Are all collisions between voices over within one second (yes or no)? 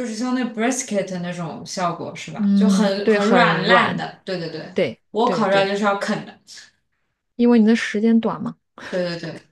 no